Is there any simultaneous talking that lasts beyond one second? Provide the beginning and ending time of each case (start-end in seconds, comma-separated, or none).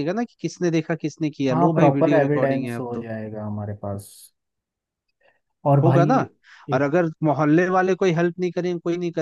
1.5-3.1